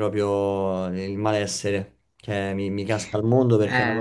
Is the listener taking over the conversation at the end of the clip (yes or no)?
no